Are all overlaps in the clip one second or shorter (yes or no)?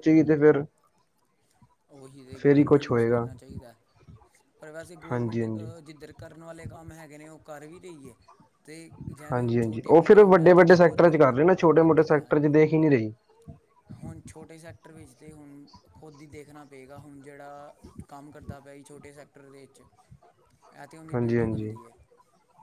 no